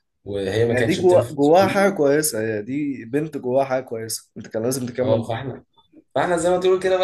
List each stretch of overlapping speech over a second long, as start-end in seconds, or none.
0.7-2.0